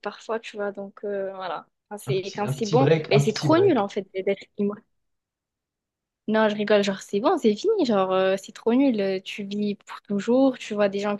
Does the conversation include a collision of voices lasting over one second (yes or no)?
yes